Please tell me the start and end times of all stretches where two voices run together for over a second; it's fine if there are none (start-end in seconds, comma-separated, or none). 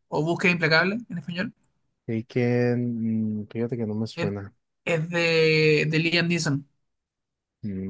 none